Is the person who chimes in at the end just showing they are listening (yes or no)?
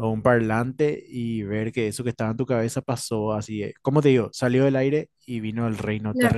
no